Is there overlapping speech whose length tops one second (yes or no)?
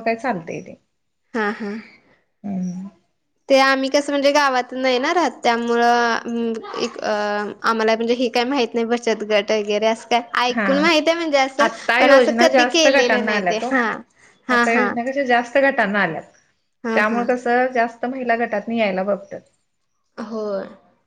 yes